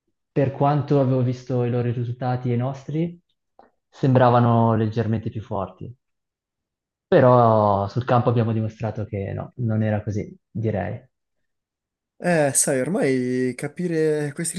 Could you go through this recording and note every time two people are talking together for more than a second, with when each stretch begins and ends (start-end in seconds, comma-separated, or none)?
none